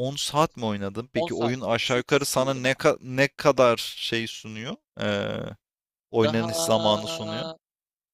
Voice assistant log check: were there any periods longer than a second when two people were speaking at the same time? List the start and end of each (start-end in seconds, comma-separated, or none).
1.1-2.9